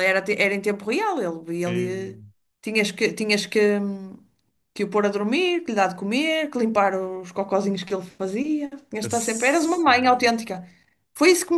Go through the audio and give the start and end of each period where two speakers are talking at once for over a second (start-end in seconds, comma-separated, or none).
9.0-10.3